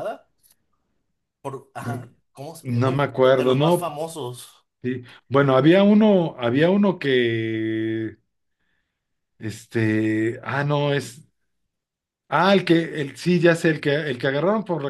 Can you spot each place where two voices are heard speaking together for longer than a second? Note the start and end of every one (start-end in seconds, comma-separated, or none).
2.6-3.9